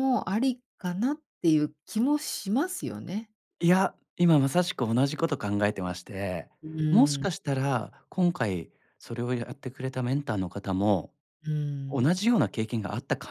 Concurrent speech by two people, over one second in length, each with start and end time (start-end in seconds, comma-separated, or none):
none